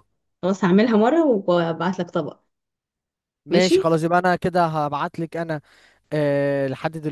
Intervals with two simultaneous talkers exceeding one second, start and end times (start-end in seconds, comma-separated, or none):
none